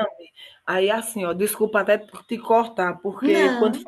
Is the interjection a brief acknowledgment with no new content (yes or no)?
yes